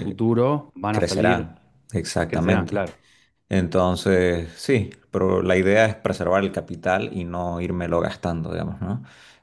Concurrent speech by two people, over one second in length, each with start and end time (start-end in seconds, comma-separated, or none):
none